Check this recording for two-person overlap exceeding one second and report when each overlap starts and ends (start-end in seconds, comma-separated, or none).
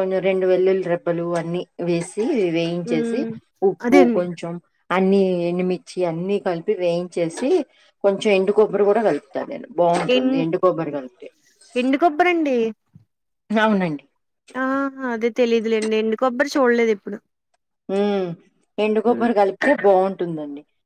none